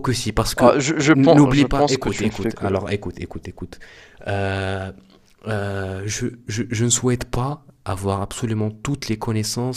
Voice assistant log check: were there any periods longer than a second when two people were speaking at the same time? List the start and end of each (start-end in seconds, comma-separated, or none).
0.6-2.7